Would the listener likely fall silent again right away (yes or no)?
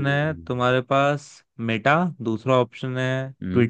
yes